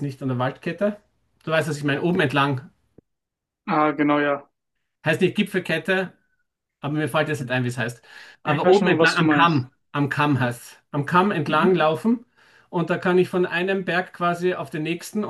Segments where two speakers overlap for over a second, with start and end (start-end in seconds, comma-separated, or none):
8.4-9.7